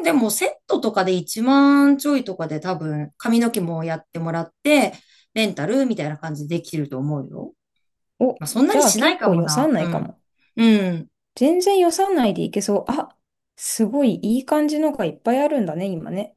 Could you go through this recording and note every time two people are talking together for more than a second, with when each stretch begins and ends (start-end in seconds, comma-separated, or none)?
8.4-10.1